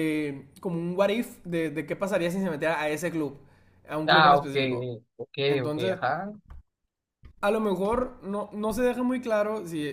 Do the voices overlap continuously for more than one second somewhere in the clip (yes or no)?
no